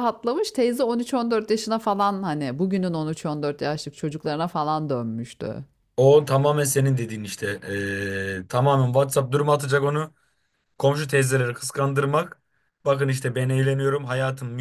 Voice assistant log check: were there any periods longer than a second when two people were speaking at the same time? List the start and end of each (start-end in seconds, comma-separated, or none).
none